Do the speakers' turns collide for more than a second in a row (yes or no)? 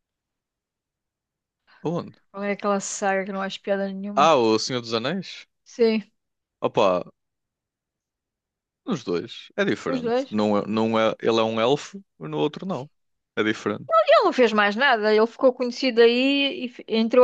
no